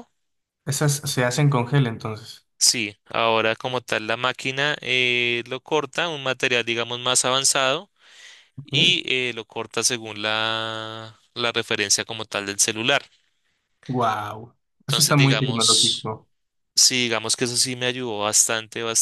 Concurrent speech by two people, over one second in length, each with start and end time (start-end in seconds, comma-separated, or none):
14.8-16.1